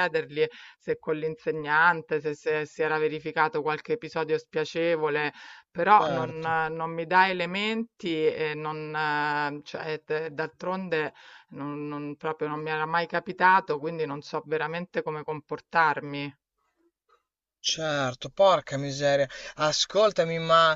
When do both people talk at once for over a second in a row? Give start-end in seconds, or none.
none